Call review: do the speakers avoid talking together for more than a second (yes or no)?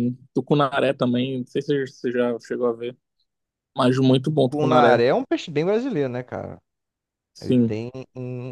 yes